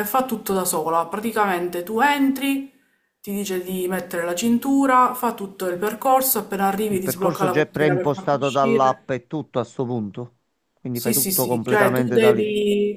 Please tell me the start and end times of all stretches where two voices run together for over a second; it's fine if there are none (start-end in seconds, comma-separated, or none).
6.9-9.0, 10.9-12.5